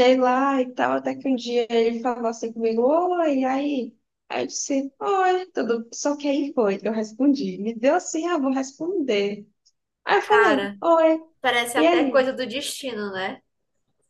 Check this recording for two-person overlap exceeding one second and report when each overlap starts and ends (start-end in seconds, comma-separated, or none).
none